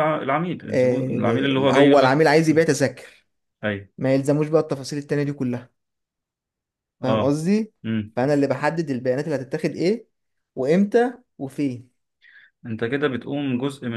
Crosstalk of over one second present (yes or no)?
yes